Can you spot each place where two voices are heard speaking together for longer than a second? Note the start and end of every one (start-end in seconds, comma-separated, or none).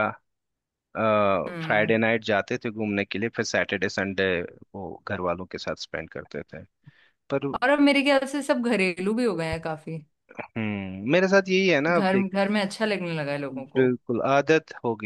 none